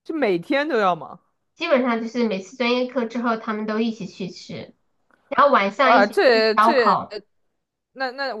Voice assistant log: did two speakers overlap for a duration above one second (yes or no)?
yes